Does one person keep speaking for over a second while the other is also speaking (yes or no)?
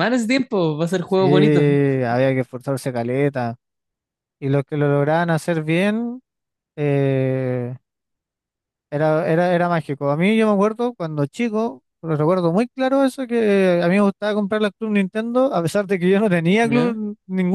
no